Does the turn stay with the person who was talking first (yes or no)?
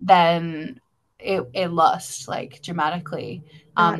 yes